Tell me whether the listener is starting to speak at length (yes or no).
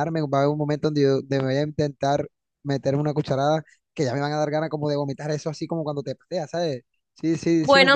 yes